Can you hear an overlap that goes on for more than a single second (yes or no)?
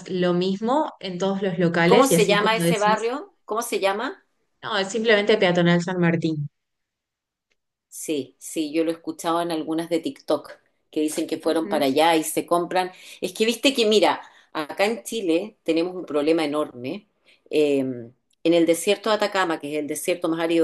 yes